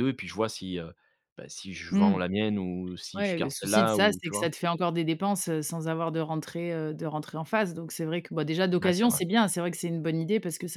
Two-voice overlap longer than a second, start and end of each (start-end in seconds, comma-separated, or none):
3.2-4.5